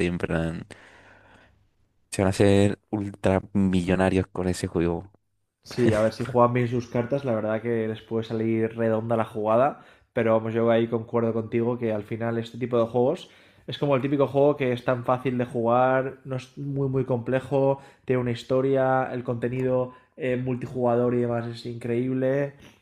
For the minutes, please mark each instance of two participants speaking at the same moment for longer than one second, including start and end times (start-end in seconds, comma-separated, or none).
none